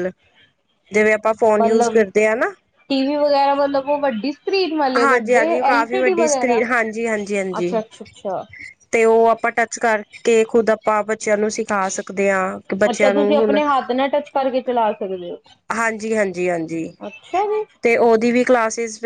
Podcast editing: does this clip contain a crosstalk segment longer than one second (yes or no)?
yes